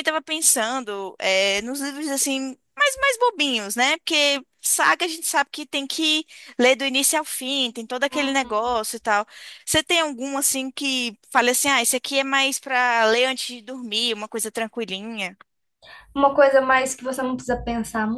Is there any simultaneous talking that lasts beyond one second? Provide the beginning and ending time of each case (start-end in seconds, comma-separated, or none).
none